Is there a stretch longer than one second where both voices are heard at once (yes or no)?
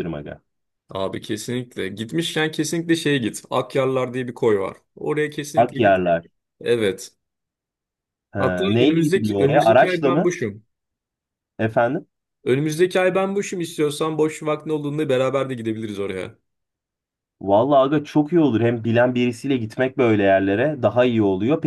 yes